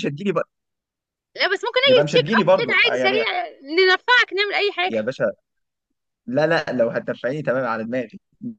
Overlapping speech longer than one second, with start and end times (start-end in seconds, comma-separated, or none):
1.8-3.2